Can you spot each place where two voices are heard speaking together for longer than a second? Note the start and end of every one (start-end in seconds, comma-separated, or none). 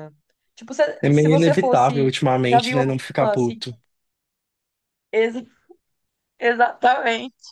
1.0-3.7